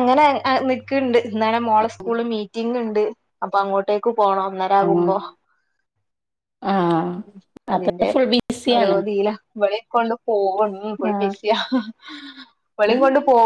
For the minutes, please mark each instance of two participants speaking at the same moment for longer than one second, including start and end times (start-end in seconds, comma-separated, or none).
none